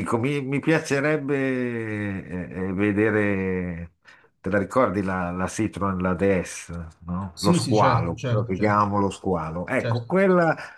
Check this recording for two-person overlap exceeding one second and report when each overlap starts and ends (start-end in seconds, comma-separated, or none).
7.3-8.9